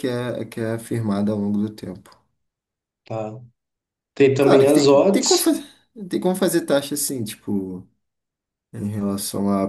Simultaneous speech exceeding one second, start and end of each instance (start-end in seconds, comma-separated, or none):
4.4-5.6